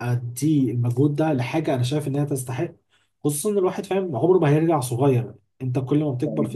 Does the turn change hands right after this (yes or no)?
no